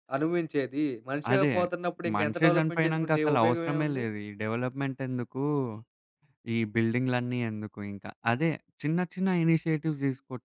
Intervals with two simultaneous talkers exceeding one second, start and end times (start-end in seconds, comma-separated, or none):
2.2-4.0